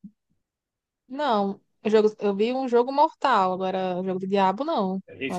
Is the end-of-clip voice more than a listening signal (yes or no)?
yes